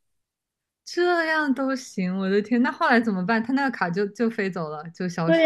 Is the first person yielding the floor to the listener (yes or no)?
yes